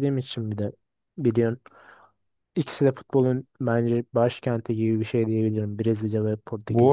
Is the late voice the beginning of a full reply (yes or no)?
yes